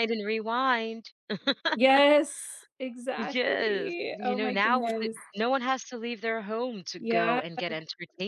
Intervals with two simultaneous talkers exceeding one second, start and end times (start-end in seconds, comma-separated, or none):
3.2-5.2